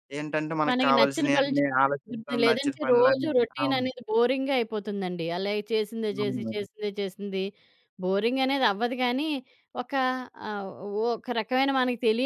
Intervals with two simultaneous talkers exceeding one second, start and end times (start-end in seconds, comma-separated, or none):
0.7-3.9